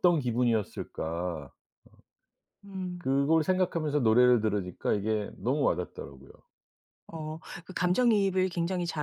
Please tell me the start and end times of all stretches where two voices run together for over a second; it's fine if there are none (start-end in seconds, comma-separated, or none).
none